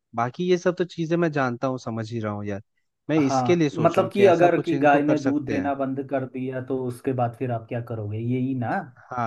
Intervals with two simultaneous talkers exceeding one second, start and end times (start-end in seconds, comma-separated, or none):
3.2-5.7